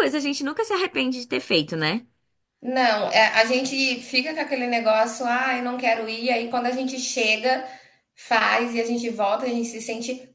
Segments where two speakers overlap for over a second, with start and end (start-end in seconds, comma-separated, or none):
none